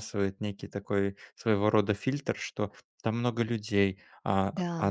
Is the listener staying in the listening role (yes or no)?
yes